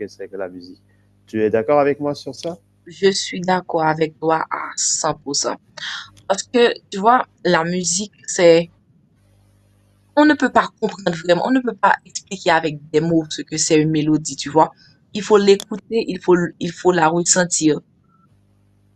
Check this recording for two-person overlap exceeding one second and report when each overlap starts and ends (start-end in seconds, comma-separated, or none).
none